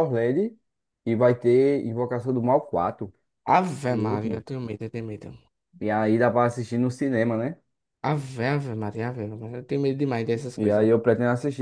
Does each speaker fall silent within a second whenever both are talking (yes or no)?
yes